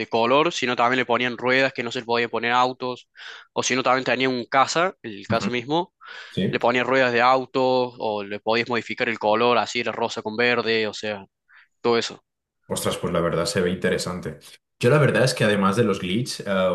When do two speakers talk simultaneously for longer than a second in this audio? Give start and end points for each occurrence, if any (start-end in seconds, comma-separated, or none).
none